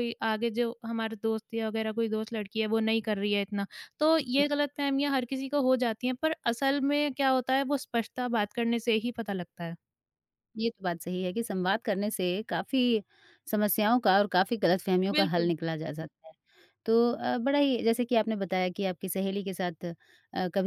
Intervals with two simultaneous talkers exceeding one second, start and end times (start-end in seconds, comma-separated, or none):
none